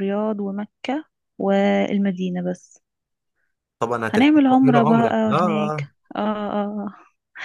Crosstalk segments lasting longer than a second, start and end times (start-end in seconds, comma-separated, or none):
4.1-5.9